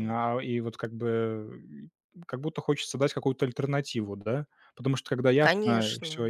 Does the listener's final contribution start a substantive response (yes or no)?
no